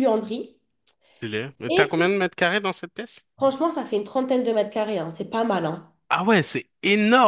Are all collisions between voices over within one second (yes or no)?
yes